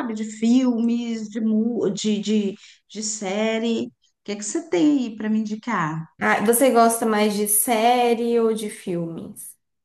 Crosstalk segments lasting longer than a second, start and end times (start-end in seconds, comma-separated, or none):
none